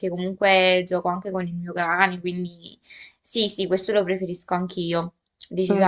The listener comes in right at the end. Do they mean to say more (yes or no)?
yes